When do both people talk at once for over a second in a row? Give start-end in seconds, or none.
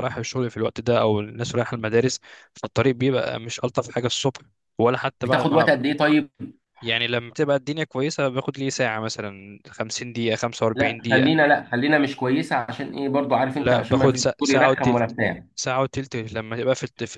13.5-15.1